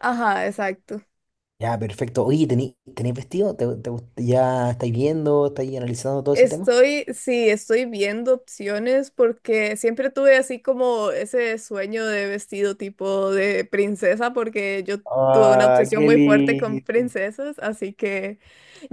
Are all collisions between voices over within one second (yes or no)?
no